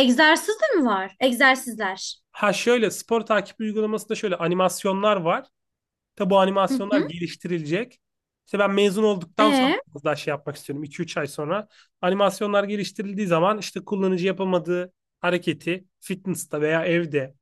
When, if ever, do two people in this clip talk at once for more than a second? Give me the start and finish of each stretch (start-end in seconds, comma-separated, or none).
none